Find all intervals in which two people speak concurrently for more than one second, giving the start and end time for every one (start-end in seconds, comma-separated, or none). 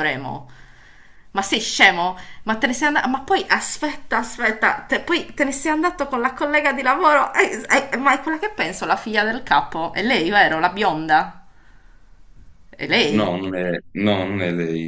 none